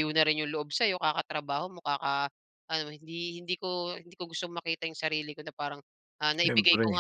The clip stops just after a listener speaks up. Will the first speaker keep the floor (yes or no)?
yes